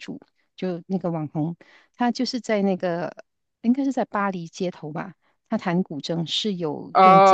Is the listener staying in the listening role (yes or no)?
no